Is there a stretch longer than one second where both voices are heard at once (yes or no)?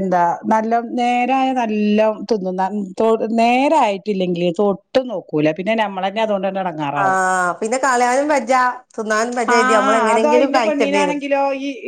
yes